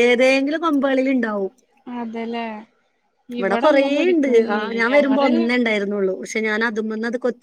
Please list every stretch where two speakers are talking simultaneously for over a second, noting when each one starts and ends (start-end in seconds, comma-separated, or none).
3.4-5.3